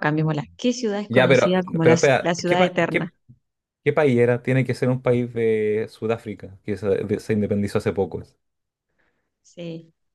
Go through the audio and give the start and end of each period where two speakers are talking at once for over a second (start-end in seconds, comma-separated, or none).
1.1-3.1